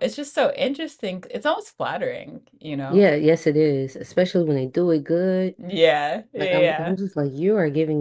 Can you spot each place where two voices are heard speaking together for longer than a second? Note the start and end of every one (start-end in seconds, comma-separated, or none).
none